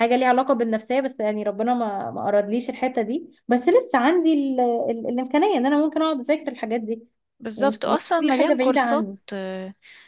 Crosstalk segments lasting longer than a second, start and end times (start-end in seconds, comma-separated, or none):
7.6-9.2